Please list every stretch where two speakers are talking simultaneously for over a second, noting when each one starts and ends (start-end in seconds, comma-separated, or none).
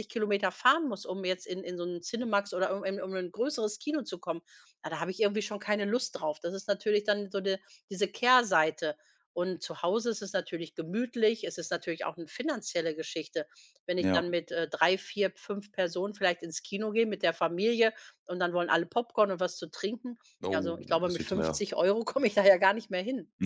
20.4-21.7